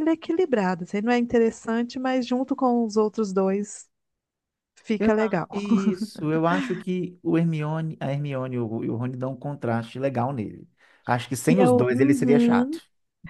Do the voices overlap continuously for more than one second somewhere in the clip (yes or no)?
yes